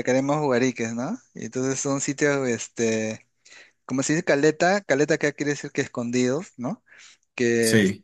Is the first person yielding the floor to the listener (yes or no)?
no